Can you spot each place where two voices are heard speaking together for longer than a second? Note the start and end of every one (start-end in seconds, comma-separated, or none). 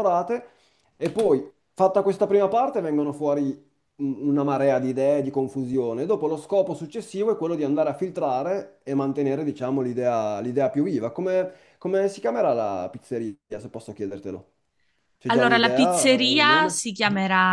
15.3-16.8